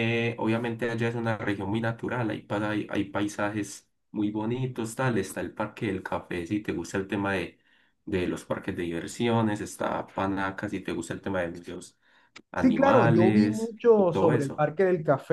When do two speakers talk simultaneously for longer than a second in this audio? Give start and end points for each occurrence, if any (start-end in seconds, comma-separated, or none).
12.5-14.7